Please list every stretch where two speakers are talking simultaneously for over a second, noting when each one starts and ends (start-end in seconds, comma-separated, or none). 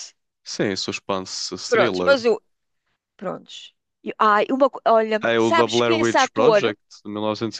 5.2-6.8